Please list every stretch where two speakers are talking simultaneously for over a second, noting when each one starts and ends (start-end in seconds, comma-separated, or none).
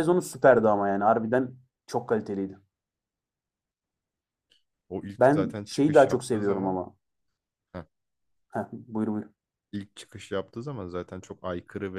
5.2-6.8